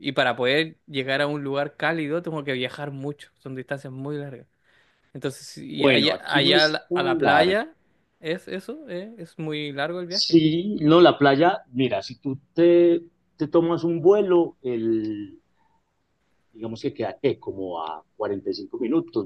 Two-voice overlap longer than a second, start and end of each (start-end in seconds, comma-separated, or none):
5.8-7.6